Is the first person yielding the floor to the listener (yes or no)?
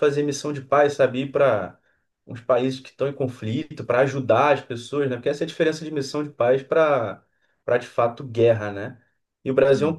no